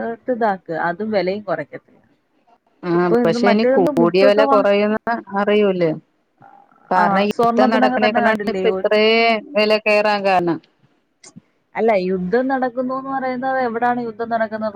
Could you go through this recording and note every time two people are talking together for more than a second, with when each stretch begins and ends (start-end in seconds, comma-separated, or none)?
7.0-8.6